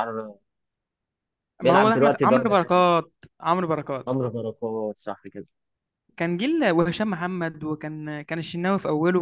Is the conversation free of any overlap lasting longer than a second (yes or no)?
no